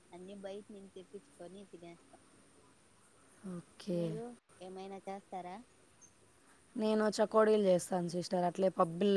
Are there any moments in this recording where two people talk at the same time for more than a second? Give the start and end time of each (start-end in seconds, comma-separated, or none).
none